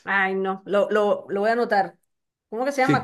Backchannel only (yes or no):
no